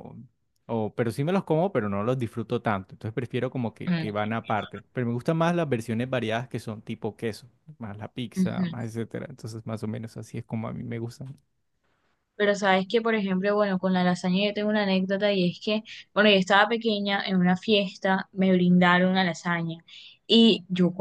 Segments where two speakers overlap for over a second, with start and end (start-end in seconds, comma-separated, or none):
none